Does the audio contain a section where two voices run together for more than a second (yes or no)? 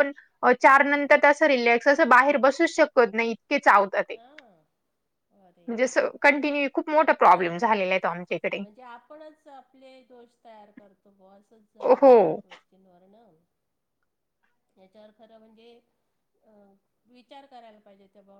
no